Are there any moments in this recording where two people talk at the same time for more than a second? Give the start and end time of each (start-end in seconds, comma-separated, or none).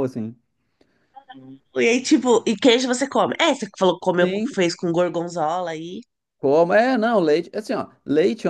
none